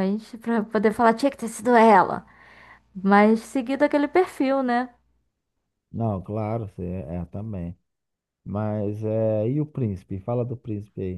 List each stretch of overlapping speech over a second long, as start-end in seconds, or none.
none